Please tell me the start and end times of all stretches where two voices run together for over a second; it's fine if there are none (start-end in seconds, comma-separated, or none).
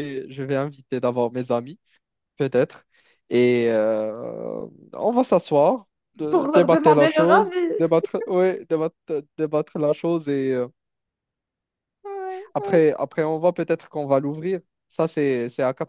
6.3-7.8